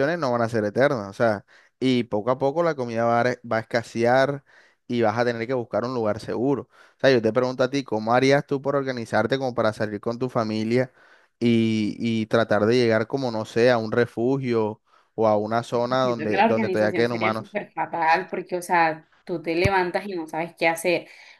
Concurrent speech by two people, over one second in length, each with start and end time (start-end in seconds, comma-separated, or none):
16.0-17.6